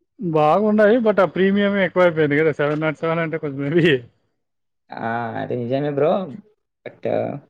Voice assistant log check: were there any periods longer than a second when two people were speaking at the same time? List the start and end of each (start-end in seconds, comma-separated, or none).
none